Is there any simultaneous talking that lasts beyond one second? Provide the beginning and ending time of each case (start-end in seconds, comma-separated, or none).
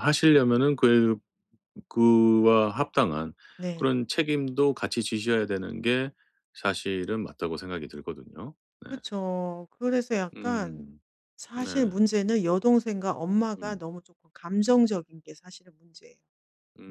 none